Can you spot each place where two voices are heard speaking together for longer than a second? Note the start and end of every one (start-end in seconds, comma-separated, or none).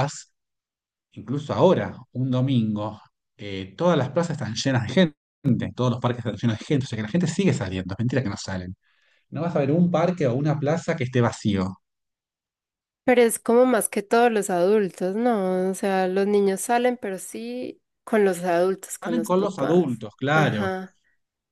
19.0-20.7